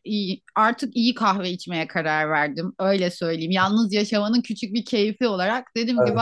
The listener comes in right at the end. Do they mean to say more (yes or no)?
no